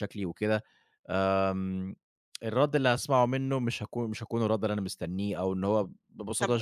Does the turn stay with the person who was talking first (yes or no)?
no